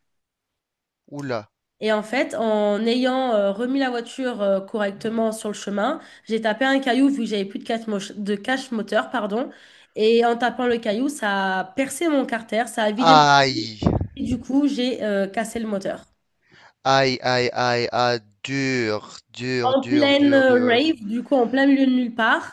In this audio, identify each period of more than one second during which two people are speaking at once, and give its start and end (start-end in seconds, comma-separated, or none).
19.6-21.0